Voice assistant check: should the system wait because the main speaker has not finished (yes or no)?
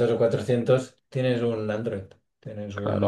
no